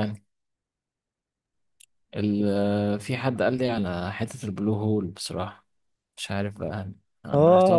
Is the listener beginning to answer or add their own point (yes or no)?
yes